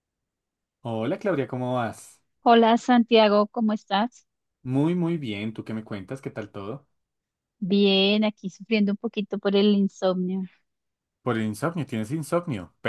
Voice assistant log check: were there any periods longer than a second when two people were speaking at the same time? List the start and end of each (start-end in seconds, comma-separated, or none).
none